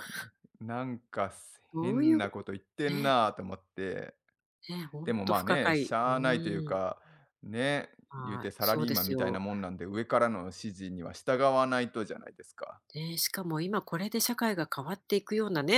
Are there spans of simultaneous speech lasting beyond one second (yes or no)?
yes